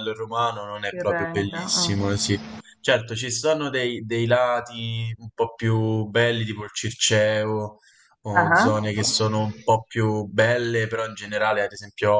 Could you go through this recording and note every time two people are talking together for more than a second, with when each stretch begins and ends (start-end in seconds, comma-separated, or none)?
0.9-2.3